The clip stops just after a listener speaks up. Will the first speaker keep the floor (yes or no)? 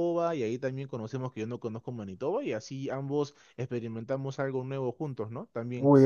no